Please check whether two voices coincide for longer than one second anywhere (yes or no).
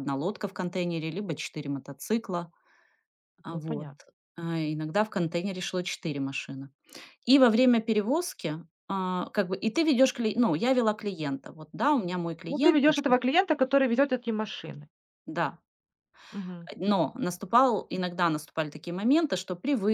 no